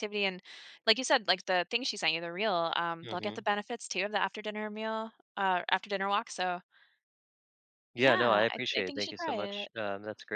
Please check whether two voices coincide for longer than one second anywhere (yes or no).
yes